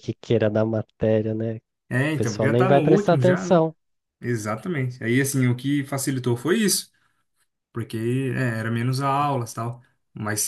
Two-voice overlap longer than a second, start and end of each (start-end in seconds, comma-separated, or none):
2.2-3.7